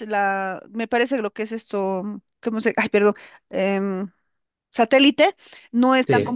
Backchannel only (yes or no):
yes